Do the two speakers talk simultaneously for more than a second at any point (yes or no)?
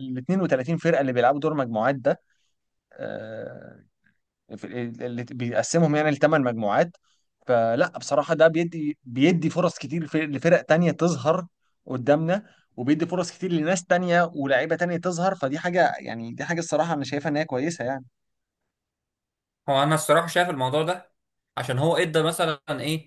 no